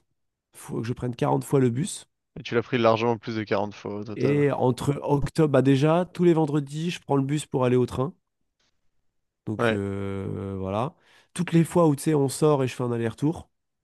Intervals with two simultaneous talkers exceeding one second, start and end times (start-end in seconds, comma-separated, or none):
none